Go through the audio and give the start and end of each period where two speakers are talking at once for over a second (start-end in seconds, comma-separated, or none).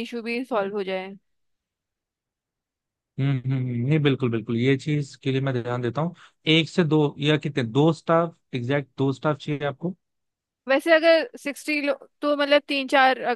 none